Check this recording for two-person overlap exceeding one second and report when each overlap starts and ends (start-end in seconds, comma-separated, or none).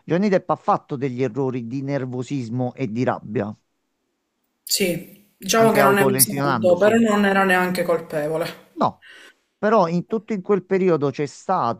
5.5-7.0